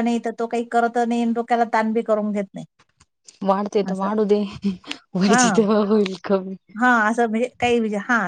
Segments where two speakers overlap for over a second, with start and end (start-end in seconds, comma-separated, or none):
none